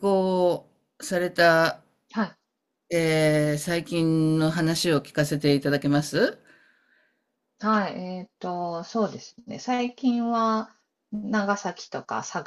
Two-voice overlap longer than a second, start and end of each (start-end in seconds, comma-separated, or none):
none